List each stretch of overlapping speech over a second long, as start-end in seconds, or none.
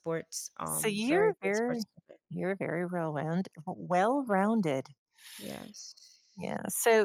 0.6-1.9